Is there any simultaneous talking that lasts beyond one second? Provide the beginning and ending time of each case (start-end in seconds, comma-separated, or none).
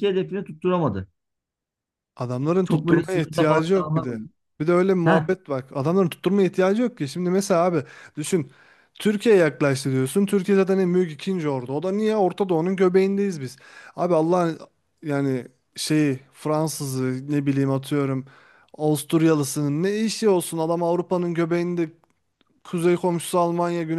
2.6-4.2